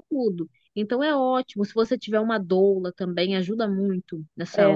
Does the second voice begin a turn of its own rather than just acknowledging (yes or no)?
yes